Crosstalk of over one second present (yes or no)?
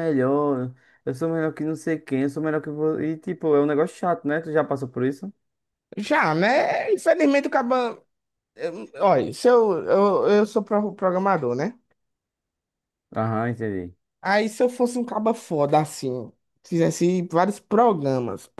no